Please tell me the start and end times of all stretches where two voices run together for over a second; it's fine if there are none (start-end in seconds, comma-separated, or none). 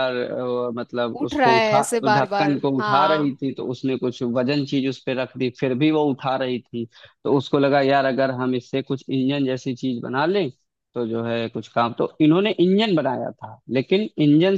1.2-3.4